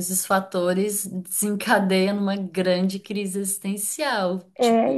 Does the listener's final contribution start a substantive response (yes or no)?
yes